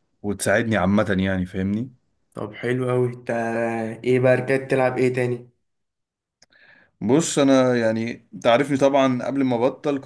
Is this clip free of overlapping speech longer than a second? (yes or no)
yes